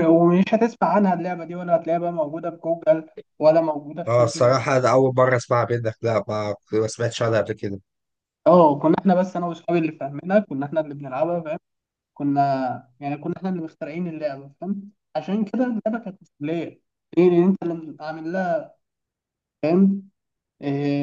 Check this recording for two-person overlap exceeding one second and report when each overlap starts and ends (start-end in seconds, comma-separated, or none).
none